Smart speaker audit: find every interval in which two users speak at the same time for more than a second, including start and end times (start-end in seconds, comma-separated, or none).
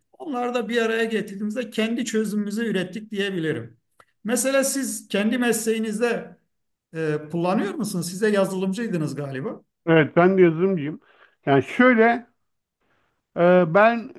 none